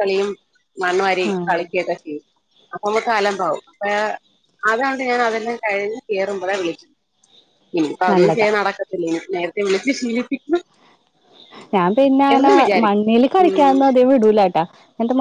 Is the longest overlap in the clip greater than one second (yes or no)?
no